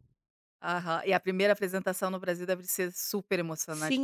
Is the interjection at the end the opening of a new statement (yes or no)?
yes